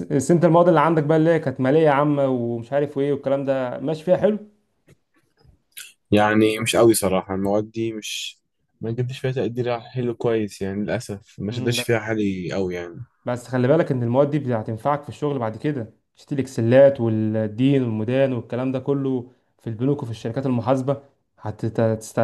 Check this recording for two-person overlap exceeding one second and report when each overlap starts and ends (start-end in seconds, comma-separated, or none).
none